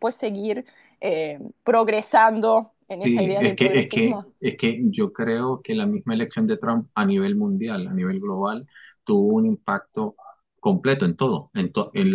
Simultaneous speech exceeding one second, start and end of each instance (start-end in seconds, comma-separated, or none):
3.0-4.3